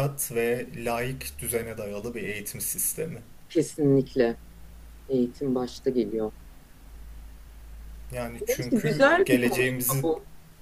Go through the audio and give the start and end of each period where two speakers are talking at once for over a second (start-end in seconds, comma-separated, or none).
8.5-10.1